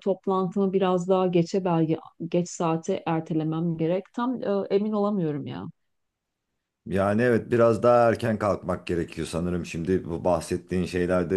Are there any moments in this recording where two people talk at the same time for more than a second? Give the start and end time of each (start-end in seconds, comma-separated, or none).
none